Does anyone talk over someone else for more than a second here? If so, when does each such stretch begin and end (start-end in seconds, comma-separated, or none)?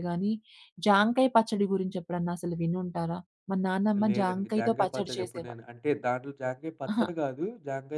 4.1-5.6